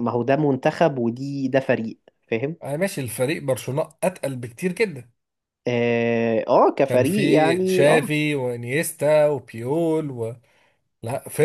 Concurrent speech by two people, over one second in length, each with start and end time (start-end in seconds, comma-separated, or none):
6.9-8.1